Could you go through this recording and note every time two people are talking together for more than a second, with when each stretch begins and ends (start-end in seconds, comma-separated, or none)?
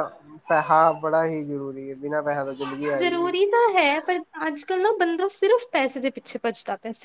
none